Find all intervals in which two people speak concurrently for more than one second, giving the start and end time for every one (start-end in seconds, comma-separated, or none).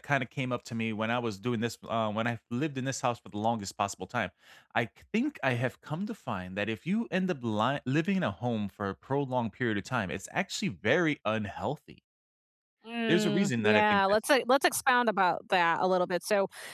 13.1-14.3